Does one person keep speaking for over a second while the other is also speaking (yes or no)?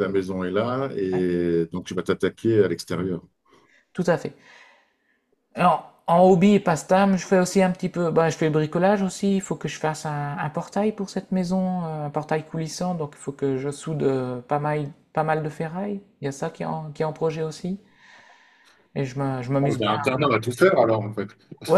no